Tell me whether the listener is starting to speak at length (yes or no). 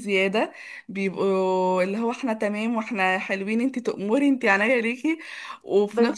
no